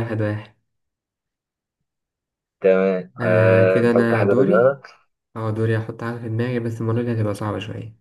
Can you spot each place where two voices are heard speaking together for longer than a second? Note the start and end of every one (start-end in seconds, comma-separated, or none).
3.2-4.8